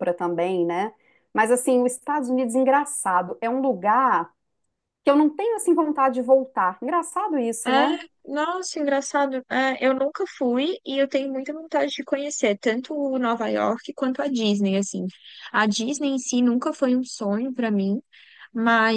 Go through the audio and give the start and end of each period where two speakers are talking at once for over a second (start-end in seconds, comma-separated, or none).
none